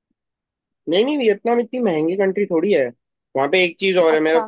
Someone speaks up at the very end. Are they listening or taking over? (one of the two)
listening